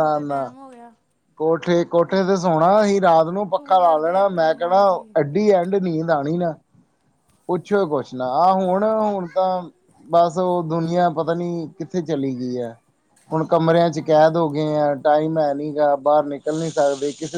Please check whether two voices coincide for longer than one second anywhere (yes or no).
yes